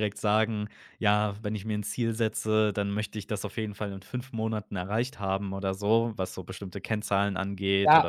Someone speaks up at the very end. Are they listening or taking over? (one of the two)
taking over